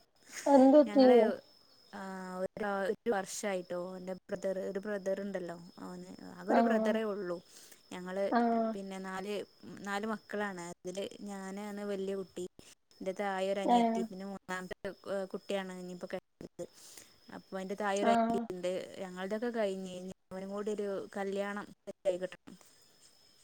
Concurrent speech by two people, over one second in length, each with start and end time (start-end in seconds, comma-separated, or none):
none